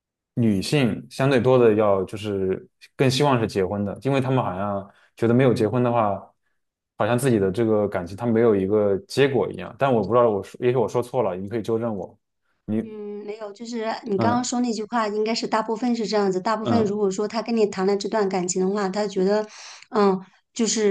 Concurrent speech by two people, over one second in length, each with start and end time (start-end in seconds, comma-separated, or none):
none